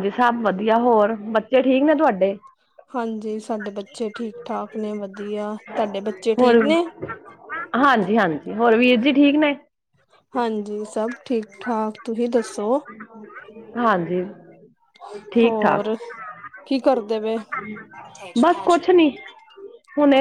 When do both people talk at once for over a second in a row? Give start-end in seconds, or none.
none